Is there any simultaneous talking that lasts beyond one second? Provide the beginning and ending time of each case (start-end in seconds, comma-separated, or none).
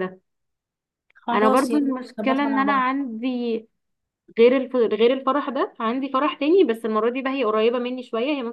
1.3-2.9